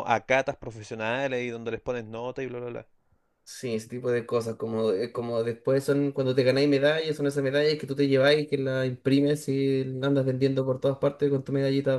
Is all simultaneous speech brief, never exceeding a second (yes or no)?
yes